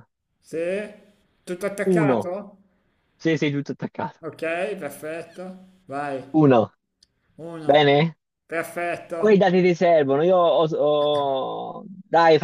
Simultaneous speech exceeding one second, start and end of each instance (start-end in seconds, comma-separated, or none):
none